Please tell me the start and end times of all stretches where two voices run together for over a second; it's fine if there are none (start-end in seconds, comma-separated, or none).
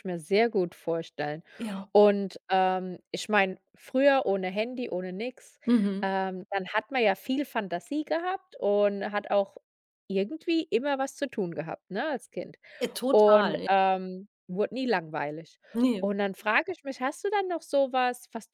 none